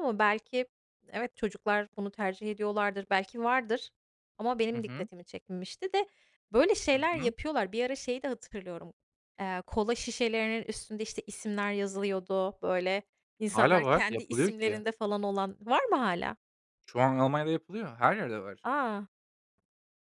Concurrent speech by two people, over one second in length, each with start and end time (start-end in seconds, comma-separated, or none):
13.5-14.8